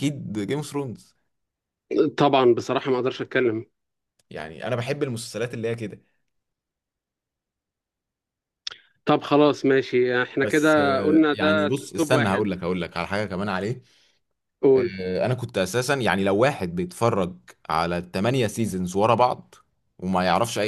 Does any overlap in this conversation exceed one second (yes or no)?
yes